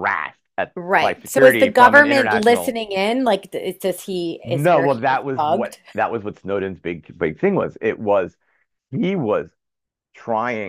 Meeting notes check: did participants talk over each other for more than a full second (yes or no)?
yes